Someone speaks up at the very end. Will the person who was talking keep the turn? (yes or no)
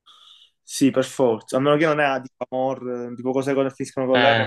no